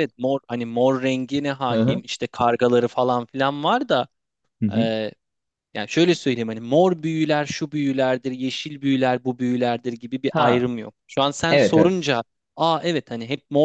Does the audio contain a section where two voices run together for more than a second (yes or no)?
no